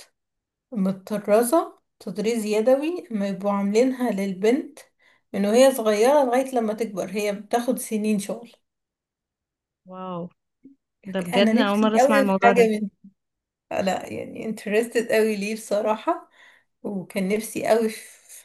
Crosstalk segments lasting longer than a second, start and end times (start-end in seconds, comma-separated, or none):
11.3-12.7